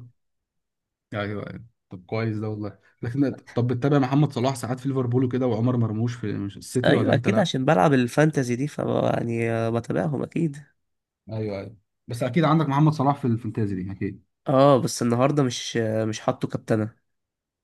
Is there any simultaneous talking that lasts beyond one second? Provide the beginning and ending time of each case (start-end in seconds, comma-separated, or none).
none